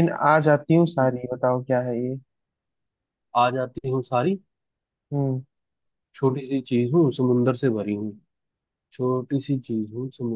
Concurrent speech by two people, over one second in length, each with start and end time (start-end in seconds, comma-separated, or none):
none